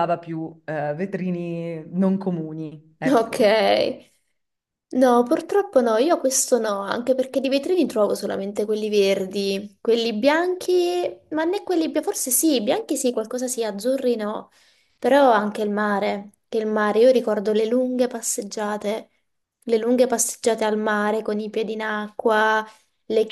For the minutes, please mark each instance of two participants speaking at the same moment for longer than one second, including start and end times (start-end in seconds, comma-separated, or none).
none